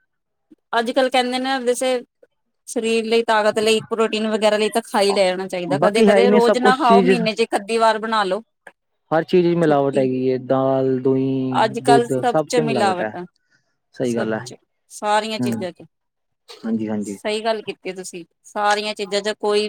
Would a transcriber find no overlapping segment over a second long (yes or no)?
no